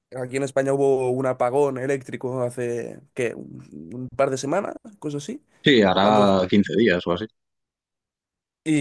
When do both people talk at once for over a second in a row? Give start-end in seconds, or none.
none